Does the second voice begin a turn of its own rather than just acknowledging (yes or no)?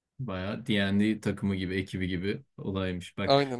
no